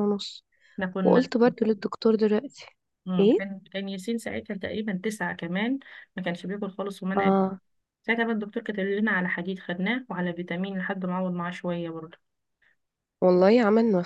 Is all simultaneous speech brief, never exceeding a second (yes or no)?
yes